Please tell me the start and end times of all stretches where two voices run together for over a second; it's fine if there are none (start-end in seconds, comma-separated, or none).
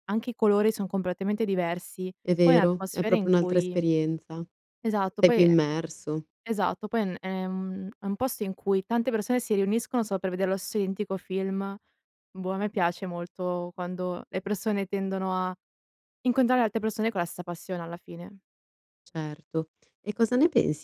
2.2-3.8